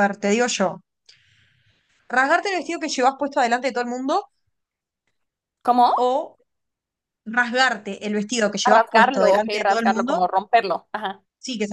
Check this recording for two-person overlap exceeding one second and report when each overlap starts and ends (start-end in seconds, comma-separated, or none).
8.6-10.2